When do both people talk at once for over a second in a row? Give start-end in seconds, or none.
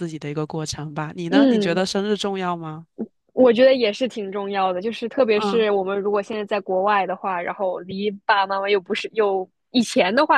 none